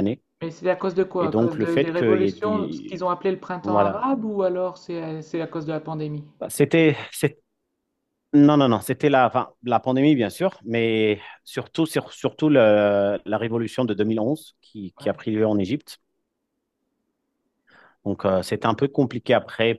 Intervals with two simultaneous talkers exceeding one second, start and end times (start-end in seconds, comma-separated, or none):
1.2-3.0